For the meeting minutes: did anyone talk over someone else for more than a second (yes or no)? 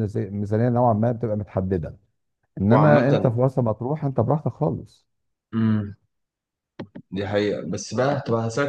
no